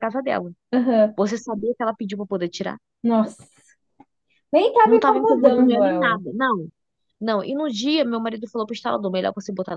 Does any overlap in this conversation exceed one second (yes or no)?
yes